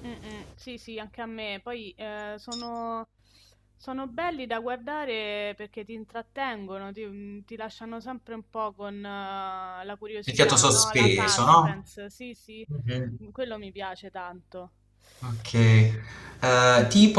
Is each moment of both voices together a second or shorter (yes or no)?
no